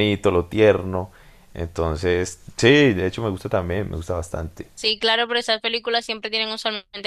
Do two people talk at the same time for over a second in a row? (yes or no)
no